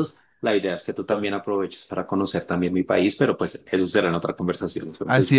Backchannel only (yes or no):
no